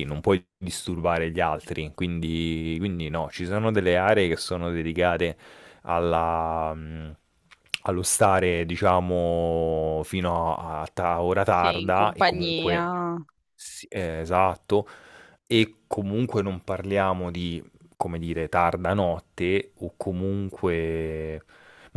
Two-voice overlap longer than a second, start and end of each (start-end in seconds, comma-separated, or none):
11.5-12.8